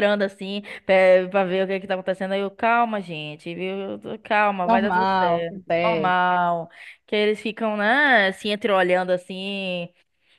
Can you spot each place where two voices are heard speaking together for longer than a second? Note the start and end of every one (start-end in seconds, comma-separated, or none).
4.7-6.2